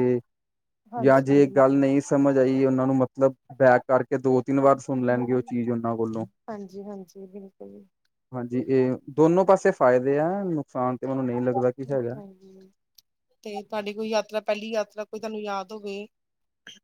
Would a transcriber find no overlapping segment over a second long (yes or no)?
yes